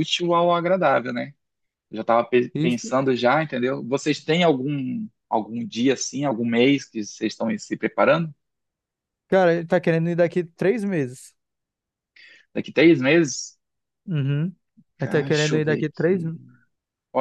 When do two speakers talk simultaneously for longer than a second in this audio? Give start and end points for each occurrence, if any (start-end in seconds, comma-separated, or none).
15.0-16.2